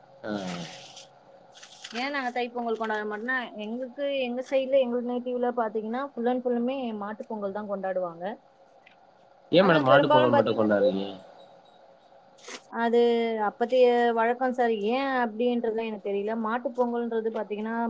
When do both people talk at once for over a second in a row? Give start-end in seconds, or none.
9.6-10.9